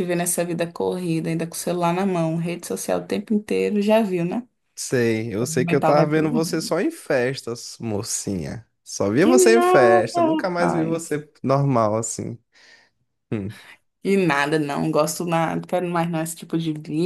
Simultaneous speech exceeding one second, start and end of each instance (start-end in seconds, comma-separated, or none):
5.4-6.7, 9.2-11.2